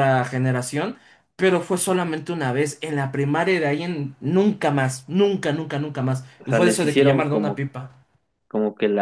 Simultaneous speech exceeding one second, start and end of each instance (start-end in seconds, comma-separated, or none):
6.4-7.7